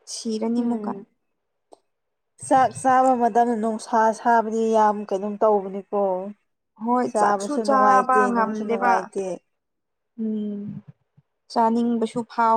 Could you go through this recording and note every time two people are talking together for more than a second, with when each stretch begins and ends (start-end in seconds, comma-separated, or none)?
7.1-8.9